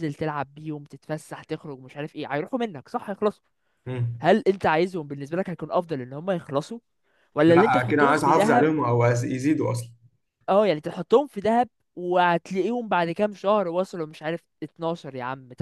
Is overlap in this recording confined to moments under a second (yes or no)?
no